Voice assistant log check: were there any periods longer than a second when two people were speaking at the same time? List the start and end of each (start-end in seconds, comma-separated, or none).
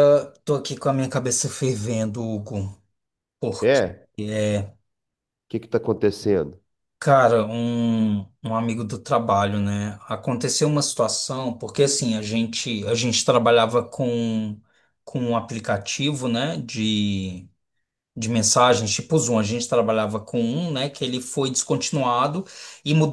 none